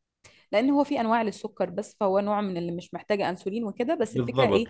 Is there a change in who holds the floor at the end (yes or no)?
yes